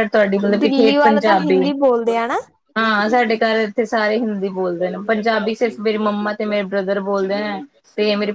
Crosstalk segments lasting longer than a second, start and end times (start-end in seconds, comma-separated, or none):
0.6-2.1